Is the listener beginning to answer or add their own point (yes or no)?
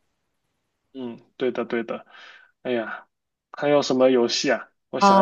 yes